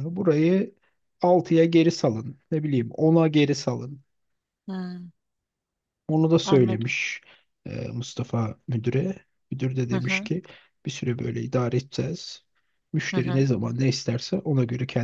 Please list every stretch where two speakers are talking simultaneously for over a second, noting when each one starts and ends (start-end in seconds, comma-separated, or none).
none